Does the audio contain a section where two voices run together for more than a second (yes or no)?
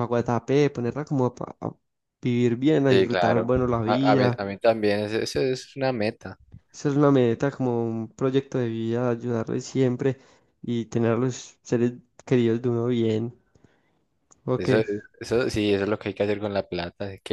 yes